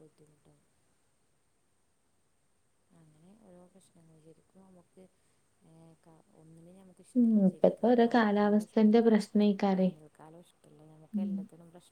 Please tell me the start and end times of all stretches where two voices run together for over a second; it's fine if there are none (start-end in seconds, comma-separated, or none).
7.2-9.1